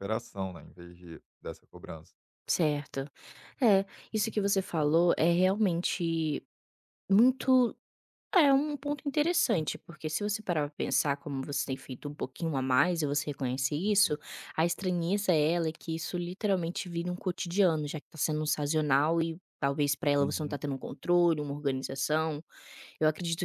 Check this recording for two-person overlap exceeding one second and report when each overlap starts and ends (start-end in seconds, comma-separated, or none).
none